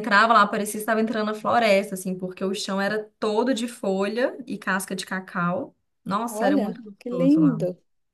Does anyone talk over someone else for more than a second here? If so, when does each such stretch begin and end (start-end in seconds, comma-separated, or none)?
6.3-7.6